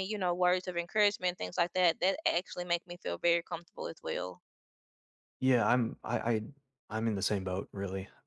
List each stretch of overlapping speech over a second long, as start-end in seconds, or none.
none